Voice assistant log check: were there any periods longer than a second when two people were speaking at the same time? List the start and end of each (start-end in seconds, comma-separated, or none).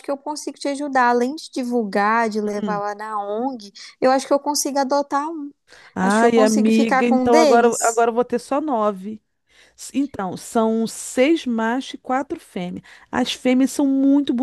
6.0-8.1